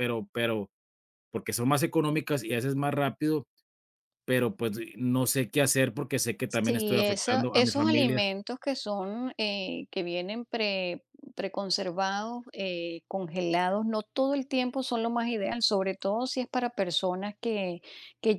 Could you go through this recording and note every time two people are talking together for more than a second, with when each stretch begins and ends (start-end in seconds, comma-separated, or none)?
6.5-8.2